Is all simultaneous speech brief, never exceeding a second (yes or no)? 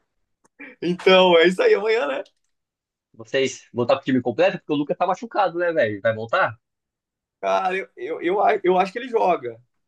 yes